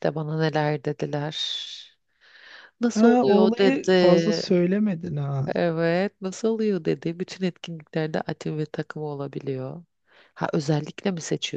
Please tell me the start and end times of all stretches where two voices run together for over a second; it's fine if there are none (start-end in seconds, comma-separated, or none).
2.9-4.4